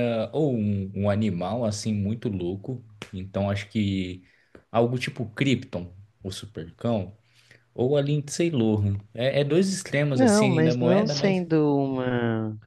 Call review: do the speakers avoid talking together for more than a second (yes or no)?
no